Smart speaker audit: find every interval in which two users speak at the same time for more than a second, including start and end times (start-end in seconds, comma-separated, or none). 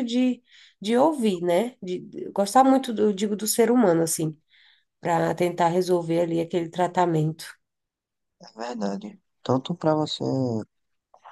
none